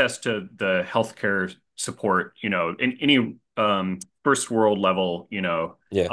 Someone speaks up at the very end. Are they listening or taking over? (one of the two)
listening